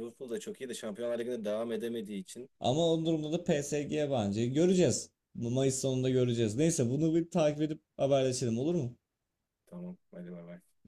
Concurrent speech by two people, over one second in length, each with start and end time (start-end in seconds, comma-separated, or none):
none